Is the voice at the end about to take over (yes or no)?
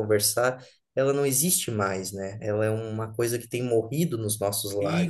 yes